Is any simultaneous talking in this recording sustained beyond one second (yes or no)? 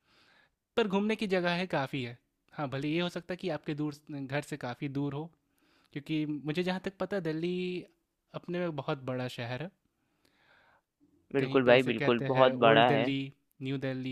yes